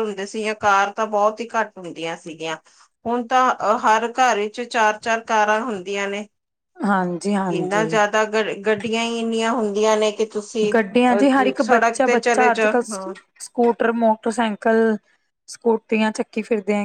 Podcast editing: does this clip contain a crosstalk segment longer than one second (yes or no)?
yes